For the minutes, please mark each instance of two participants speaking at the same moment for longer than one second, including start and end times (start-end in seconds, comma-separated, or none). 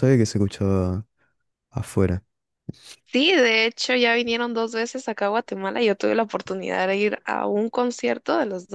none